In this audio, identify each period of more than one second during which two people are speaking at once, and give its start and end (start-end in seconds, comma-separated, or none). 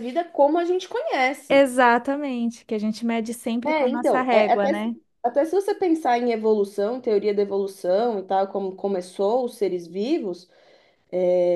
3.6-5.0